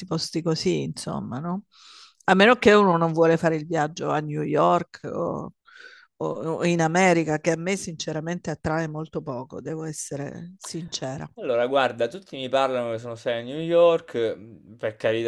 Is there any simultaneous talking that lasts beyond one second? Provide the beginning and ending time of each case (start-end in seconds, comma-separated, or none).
none